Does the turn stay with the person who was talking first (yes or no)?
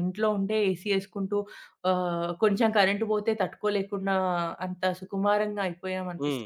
yes